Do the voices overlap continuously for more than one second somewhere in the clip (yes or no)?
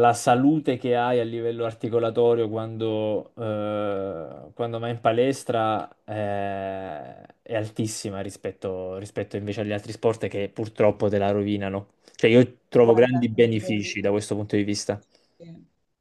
yes